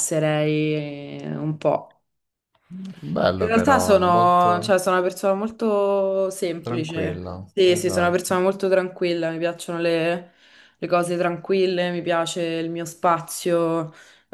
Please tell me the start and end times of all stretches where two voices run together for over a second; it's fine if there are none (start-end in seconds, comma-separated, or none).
3.4-4.7, 6.6-8.4